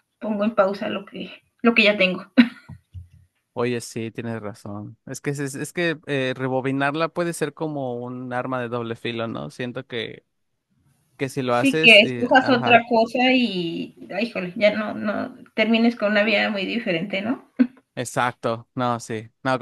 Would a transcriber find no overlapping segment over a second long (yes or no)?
no